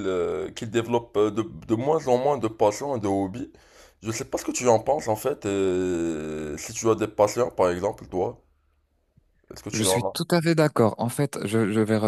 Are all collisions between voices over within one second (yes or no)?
yes